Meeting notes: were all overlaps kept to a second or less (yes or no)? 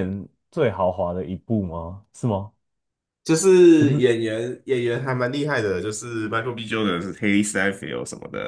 yes